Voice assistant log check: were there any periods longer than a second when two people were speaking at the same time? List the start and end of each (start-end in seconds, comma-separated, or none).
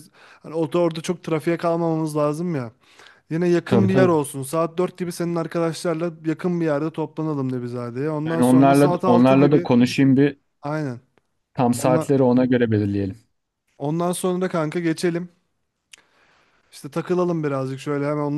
8.2-9.7